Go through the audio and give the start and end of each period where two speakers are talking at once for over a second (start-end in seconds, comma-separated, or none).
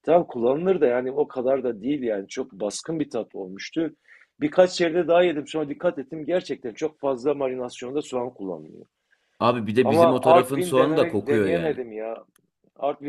9.8-11.8